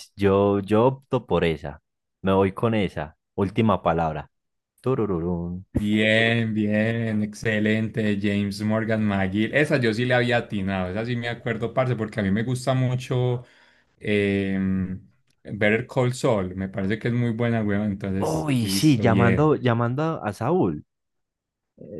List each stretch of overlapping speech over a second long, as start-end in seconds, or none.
18.2-19.5